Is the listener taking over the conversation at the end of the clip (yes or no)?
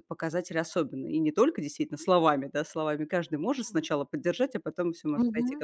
no